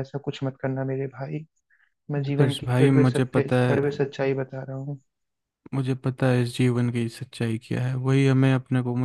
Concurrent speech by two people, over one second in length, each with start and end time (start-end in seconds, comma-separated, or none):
2.2-3.8